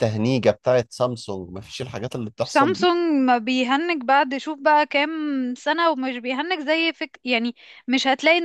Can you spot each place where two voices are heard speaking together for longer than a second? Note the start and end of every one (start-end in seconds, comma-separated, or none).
none